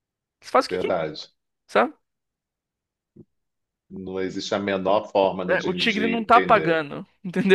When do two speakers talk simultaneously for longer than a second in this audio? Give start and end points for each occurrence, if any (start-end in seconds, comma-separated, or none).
5.5-6.8